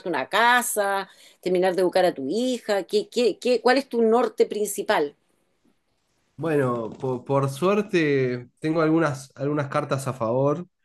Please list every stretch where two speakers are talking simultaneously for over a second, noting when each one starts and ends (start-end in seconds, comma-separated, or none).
none